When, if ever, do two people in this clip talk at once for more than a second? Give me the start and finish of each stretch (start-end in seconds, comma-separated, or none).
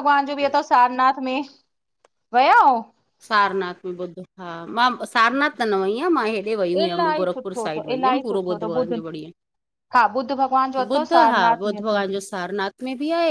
6.8-9.0